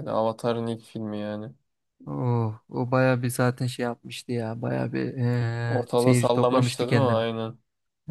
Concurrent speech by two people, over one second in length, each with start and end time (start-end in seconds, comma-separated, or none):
5.7-7.2